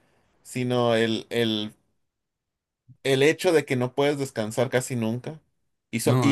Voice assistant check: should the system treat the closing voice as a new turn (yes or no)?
no